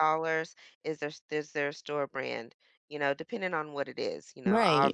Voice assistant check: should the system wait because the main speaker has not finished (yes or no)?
no